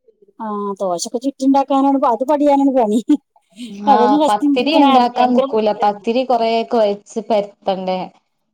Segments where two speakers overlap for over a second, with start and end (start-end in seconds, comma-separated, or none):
4.0-6.0